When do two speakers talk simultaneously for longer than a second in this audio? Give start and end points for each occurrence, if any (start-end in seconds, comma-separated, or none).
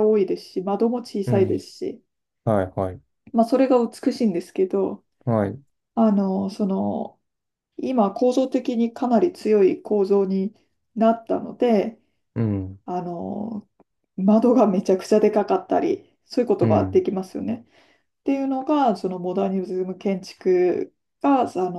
none